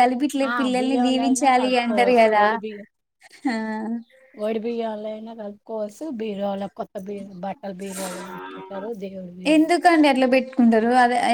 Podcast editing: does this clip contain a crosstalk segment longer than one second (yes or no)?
yes